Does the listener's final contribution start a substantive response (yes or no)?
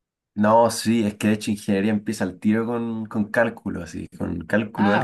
no